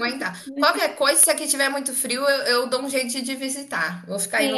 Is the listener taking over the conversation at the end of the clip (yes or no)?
yes